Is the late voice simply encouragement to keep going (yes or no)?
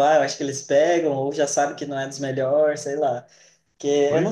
yes